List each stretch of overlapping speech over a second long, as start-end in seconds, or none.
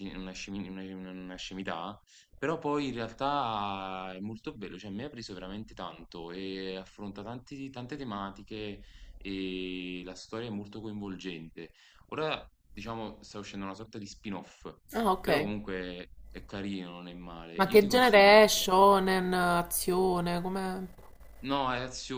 17.5-18.7